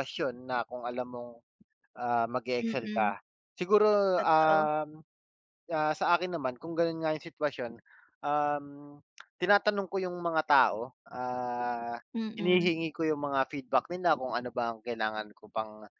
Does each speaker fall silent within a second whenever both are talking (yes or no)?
yes